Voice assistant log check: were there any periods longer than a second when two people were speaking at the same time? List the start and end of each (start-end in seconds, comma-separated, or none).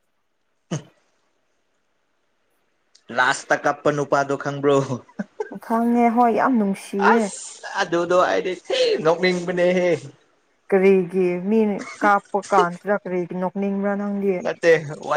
none